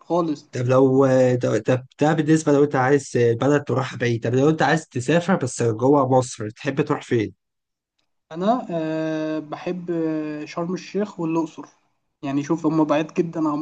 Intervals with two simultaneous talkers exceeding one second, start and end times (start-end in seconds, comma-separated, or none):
none